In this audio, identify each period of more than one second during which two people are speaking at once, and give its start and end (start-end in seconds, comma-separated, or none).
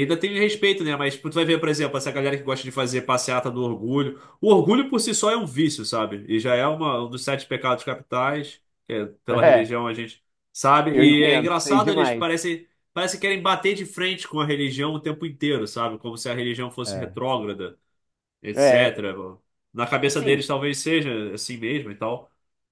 10.9-12.3